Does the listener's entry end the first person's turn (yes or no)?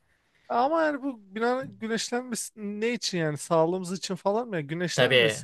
yes